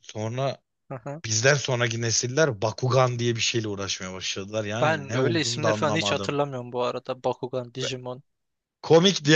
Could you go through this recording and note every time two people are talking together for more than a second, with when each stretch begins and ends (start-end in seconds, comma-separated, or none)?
4.8-6.4